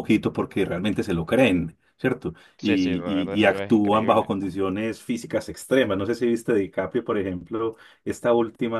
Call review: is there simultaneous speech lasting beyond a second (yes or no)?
yes